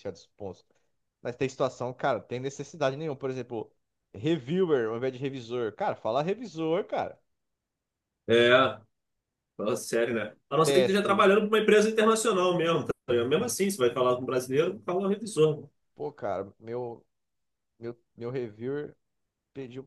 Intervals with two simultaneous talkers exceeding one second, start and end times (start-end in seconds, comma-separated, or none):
none